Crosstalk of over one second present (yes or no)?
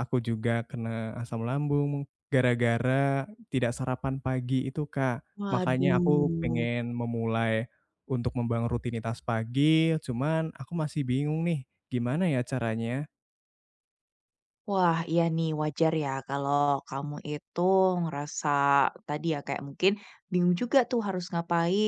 yes